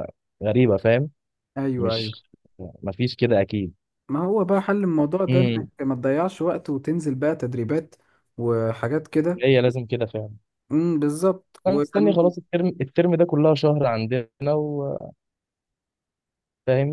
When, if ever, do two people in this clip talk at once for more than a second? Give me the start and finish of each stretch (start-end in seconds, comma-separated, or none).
none